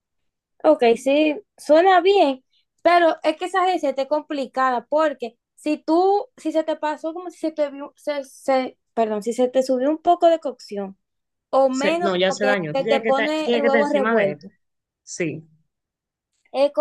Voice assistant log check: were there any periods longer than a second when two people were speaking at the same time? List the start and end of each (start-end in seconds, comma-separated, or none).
11.7-14.4